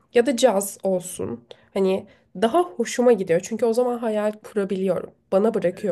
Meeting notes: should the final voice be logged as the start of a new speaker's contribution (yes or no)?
yes